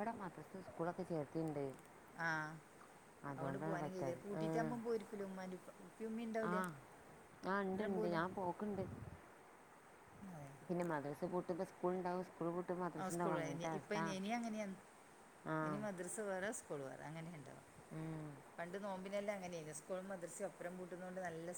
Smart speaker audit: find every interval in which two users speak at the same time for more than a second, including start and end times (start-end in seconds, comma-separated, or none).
none